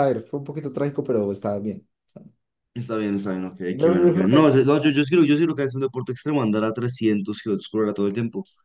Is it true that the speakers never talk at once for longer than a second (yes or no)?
no